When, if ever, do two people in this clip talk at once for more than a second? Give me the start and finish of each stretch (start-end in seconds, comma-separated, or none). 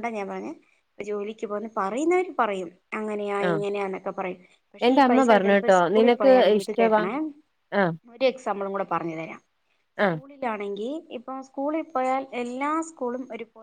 4.9-7.0